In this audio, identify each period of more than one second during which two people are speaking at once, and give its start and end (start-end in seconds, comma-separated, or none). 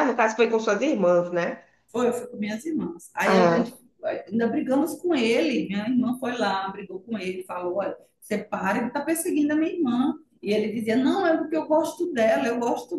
none